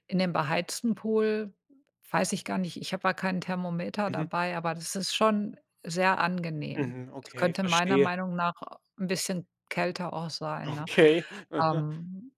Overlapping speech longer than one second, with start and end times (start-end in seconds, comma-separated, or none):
6.7-8.1